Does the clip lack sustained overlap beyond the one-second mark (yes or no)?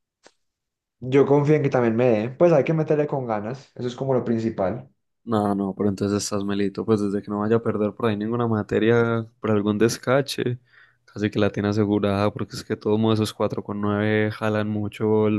yes